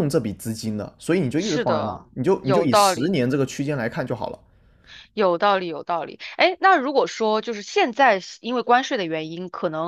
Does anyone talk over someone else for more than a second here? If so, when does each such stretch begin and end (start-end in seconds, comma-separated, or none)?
1.4-3.2